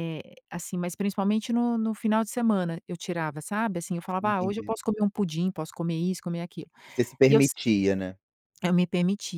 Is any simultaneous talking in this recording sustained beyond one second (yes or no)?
no